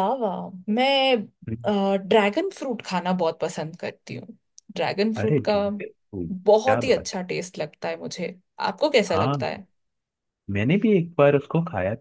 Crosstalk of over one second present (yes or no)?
no